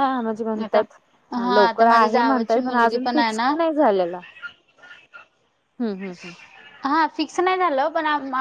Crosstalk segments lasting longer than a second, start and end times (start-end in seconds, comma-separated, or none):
1.6-3.5